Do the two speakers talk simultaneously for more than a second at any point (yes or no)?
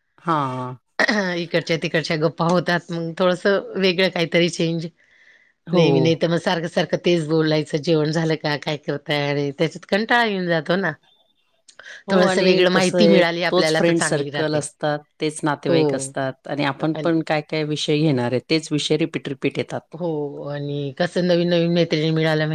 yes